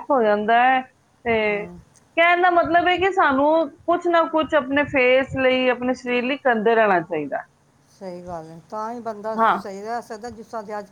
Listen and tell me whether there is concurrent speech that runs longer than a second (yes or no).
no